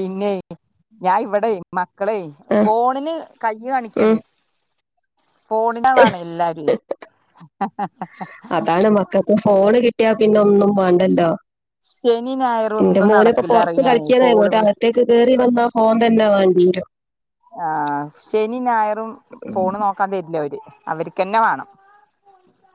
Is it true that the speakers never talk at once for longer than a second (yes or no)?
no